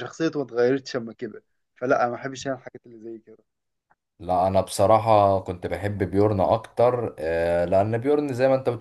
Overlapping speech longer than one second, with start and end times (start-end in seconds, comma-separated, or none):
none